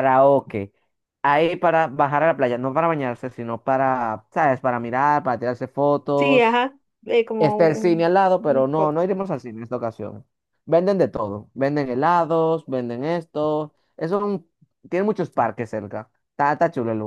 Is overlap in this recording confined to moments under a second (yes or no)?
no